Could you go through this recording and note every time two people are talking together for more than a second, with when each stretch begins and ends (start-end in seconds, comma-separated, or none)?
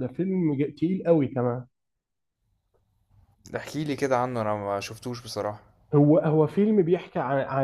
none